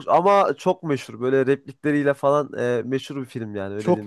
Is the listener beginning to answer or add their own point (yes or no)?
no